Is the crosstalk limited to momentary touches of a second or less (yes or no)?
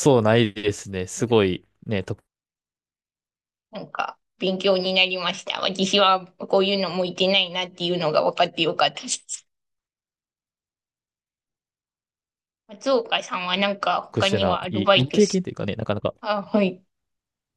no